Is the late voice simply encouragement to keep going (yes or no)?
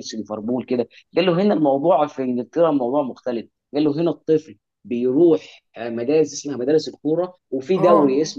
yes